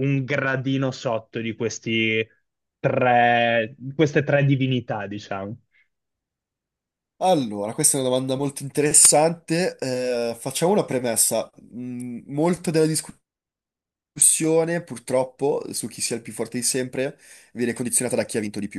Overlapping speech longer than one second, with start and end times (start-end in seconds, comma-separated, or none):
none